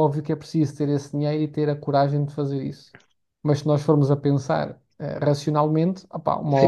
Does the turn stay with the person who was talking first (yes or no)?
yes